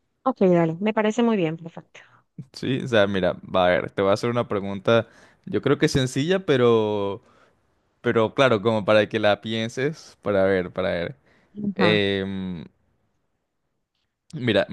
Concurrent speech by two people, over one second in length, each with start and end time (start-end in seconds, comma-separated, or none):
none